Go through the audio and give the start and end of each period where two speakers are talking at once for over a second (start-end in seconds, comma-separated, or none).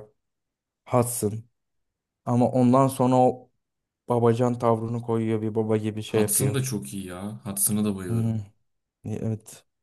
none